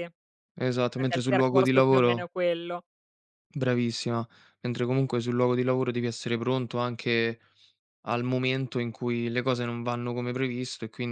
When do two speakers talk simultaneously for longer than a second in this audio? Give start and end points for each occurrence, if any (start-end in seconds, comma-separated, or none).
0.9-2.3